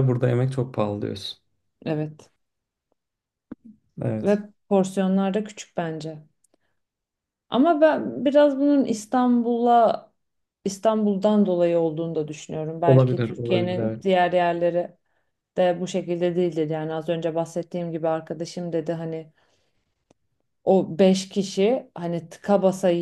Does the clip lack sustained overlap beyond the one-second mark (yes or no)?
no